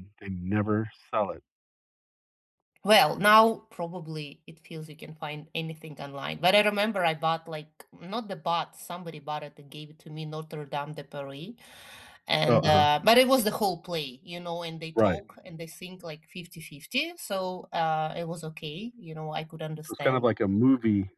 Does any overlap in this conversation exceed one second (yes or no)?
no